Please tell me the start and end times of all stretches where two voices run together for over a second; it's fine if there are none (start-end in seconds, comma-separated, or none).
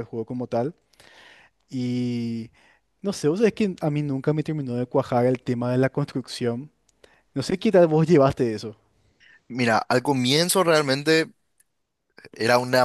none